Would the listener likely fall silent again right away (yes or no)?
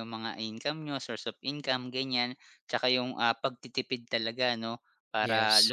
yes